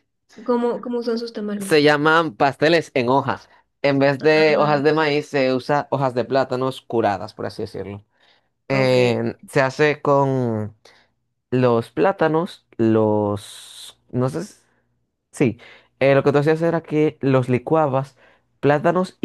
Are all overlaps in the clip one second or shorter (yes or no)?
yes